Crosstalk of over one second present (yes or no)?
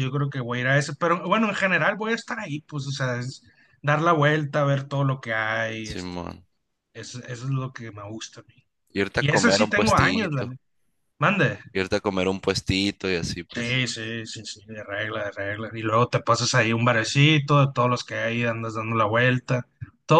yes